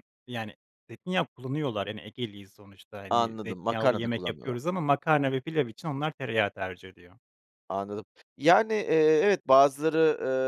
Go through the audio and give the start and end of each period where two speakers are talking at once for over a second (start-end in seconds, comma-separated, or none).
3.1-4.6